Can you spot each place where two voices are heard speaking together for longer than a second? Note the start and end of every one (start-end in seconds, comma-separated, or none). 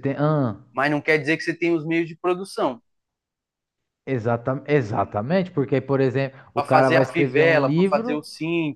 6.5-8.2